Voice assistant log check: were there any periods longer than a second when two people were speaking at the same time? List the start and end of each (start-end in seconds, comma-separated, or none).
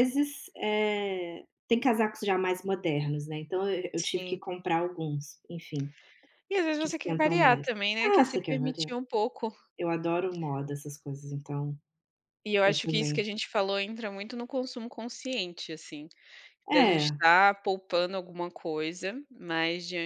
6.8-8.9